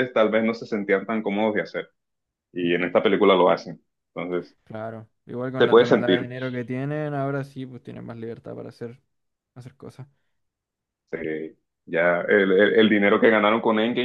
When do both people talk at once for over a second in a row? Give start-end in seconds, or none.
none